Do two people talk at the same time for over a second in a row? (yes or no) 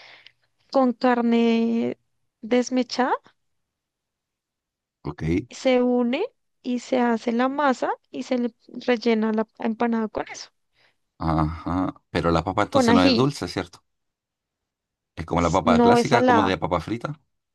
yes